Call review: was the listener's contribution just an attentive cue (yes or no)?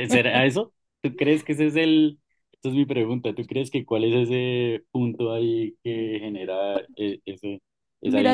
no